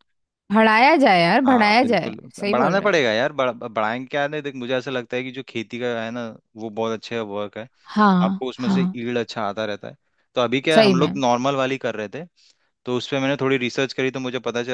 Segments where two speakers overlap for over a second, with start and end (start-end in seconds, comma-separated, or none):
1.5-3.0